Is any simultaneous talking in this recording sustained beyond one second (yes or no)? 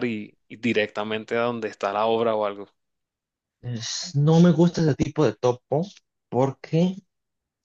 no